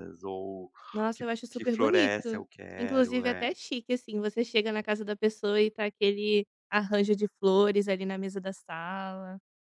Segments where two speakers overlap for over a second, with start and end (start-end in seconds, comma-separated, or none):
1.1-3.5